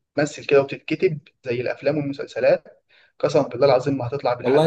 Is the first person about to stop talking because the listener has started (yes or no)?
yes